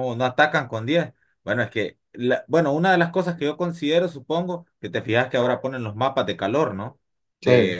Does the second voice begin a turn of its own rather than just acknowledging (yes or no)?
no